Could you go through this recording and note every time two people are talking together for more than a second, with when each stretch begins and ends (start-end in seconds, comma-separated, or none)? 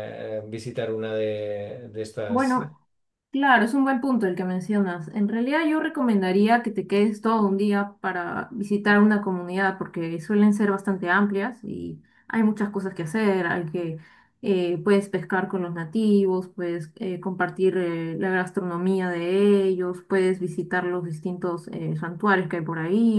none